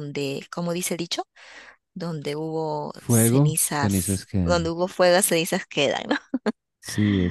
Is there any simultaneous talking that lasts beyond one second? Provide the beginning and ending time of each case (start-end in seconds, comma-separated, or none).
2.9-4.7